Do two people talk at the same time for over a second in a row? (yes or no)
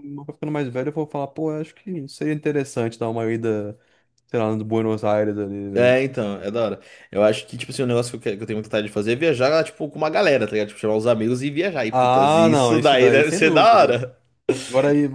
yes